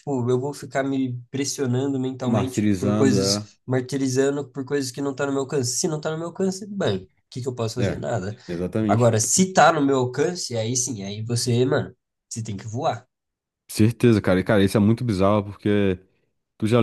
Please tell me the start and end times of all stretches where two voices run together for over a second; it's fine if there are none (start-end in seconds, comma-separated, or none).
2.2-3.5